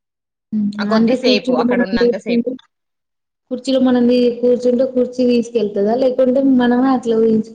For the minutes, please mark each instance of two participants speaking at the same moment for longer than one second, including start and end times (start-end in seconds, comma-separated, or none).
0.8-2.5